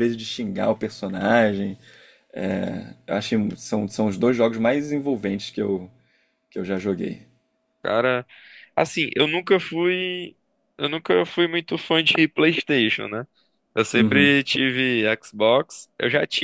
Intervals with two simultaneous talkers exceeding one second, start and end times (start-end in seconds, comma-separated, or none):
none